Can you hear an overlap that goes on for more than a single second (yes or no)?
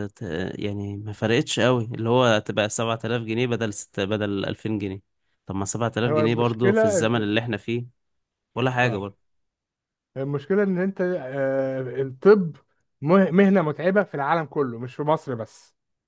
yes